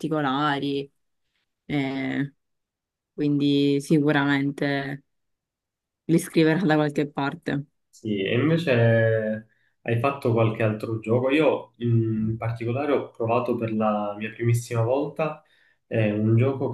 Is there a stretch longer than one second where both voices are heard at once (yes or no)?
no